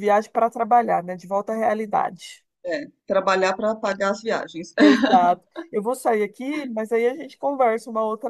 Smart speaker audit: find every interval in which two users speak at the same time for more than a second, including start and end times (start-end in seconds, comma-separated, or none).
none